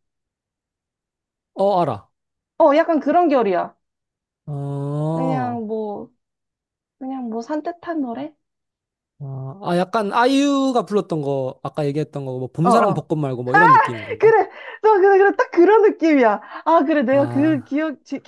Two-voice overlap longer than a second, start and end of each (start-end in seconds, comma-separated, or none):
none